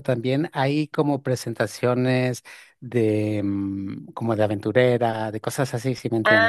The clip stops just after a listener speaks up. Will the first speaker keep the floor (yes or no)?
no